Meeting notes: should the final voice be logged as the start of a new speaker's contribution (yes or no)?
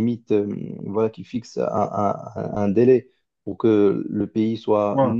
no